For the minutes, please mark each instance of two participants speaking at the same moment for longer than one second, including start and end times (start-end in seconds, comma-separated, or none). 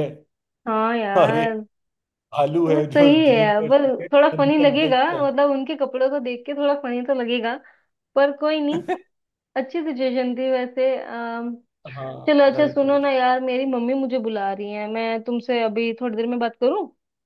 2.7-5.3